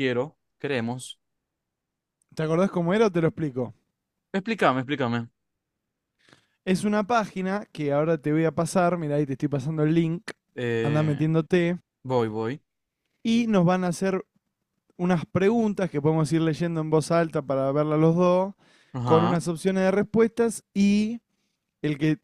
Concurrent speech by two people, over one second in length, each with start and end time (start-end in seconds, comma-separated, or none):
none